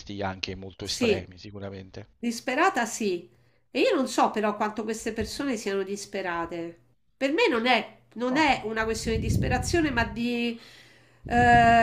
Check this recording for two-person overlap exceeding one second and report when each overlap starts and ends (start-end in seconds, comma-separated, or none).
none